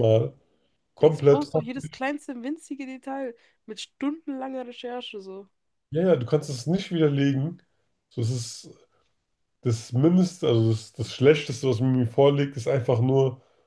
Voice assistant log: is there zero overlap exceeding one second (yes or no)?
yes